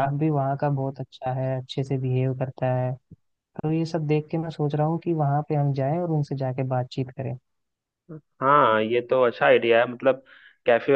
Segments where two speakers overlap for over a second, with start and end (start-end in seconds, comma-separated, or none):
none